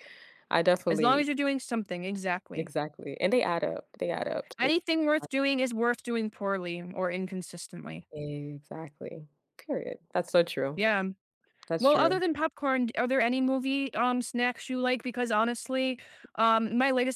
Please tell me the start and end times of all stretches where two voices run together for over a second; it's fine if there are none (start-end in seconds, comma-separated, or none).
none